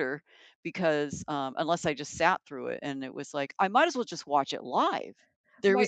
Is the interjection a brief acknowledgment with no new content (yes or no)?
yes